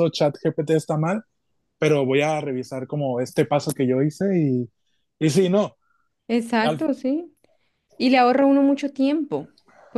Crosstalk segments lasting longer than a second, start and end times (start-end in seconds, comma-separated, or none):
none